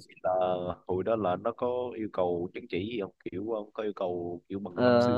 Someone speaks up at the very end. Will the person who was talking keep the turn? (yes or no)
no